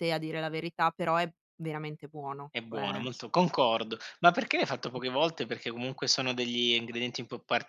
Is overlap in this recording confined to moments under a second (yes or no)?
yes